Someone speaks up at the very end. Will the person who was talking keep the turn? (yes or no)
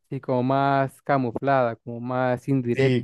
no